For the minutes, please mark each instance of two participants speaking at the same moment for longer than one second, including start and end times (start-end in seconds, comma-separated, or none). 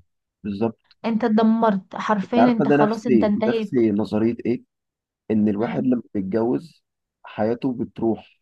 2.2-3.8